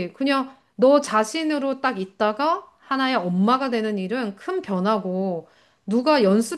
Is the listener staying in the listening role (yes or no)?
yes